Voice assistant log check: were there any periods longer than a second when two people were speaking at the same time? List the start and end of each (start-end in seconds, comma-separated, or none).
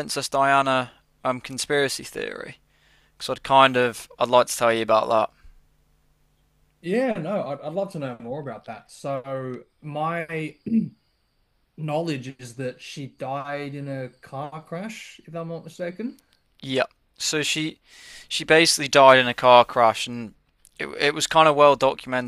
none